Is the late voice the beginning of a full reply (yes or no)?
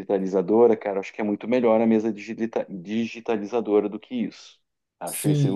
yes